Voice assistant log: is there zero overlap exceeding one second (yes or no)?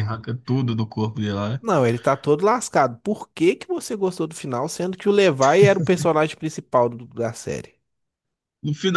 yes